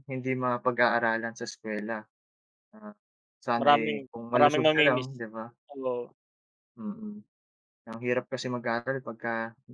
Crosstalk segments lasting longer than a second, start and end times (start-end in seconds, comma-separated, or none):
3.6-5.1